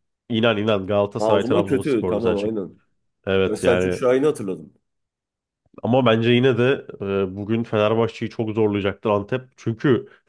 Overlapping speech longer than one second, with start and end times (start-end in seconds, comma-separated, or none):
1.2-2.5